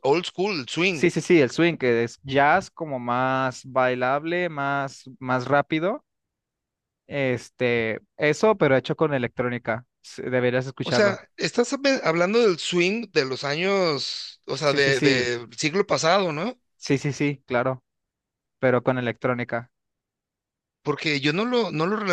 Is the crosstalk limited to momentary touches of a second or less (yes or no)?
yes